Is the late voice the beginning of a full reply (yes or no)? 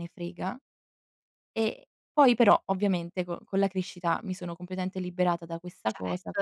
yes